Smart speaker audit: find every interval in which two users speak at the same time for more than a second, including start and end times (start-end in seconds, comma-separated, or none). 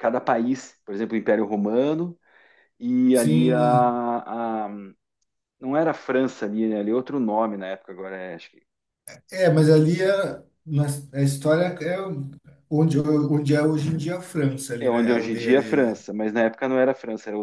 14.8-16.0